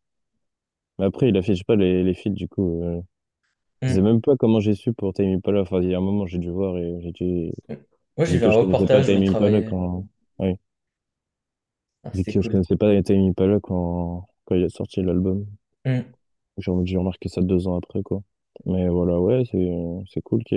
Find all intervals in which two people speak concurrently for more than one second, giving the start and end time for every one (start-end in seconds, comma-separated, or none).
8.3-9.8